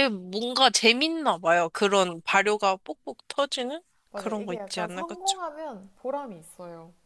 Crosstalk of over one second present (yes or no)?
yes